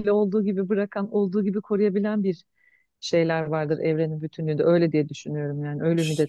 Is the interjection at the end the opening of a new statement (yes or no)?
yes